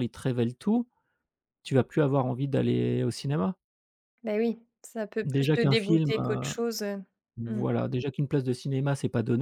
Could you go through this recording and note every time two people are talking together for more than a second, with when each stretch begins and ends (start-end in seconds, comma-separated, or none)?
5.2-6.5